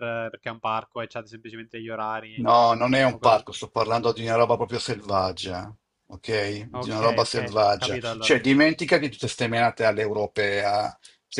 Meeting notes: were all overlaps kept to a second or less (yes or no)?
no